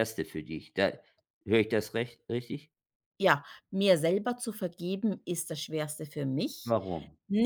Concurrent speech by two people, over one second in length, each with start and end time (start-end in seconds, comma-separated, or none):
none